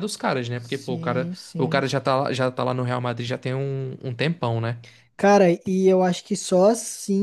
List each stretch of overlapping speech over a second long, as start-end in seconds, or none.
0.5-1.8